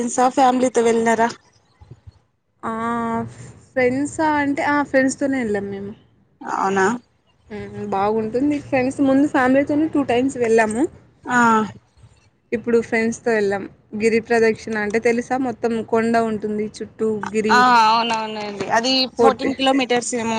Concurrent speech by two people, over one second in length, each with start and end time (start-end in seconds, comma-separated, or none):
none